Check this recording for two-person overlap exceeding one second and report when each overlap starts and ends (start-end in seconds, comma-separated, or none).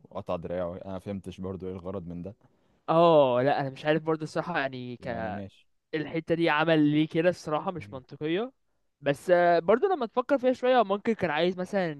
none